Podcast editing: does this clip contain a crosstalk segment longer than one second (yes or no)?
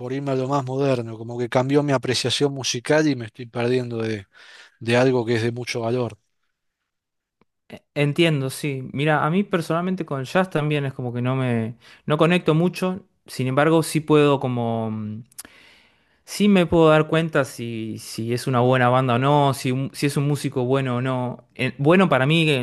no